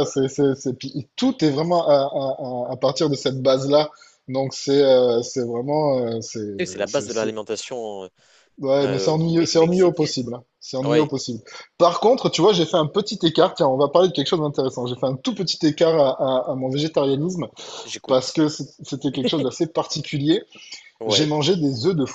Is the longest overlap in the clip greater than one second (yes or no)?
yes